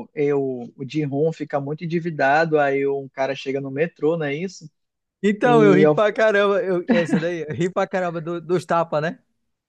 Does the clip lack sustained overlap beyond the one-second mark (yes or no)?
yes